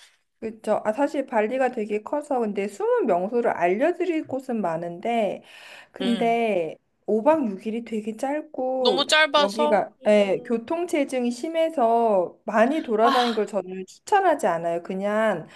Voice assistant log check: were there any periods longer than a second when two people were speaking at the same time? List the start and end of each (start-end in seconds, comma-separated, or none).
8.8-10.7